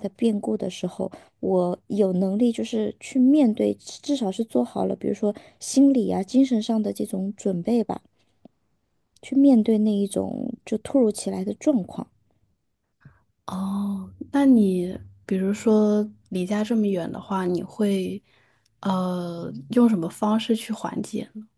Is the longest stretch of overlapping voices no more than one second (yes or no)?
yes